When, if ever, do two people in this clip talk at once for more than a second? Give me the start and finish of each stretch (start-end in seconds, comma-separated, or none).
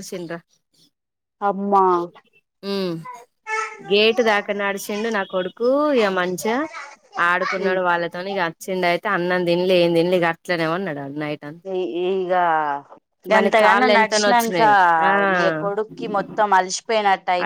13.3-14.7